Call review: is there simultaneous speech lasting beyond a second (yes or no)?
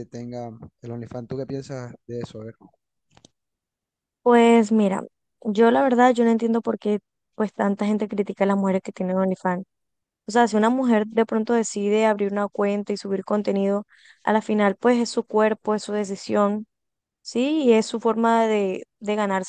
no